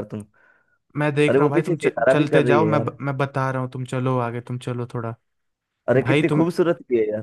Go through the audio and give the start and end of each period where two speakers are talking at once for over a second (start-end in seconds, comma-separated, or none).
1.3-2.9